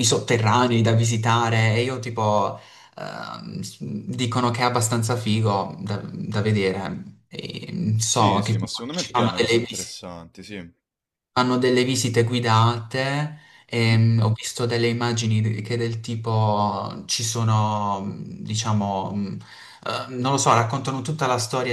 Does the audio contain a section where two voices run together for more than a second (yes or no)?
yes